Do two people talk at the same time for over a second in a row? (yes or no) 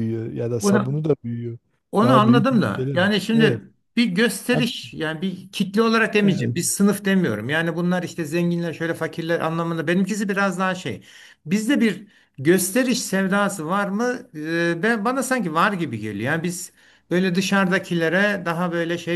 yes